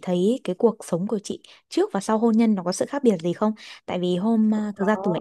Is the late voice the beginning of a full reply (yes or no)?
no